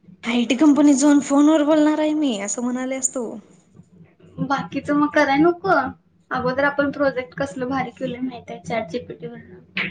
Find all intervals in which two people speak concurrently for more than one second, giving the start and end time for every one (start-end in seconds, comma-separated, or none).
none